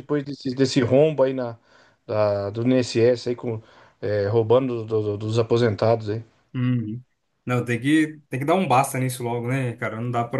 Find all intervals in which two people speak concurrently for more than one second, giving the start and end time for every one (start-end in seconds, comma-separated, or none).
none